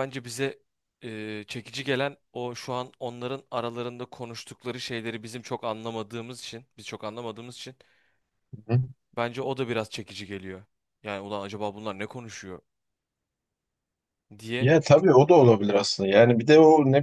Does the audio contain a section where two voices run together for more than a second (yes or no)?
no